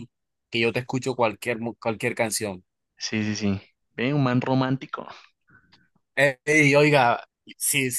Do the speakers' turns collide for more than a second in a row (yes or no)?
no